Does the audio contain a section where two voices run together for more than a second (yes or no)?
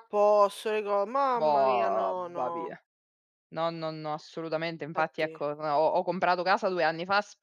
yes